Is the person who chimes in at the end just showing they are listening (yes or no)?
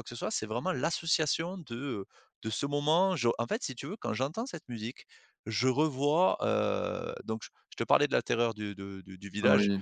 yes